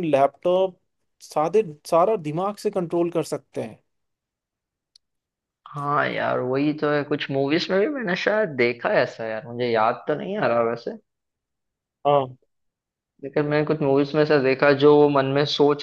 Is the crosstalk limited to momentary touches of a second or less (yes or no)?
yes